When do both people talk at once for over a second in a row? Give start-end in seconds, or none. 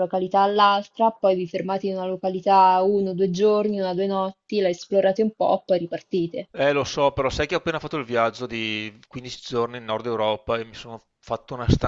none